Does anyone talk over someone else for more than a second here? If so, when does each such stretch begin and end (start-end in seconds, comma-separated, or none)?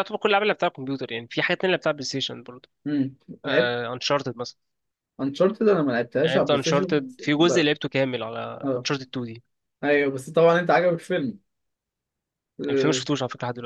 6.2-7.7